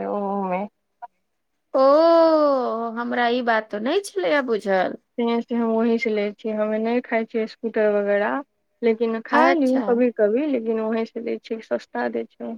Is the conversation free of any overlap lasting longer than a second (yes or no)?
yes